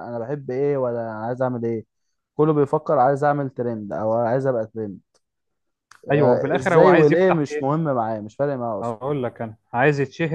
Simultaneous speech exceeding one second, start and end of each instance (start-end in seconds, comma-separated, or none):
6.1-7.8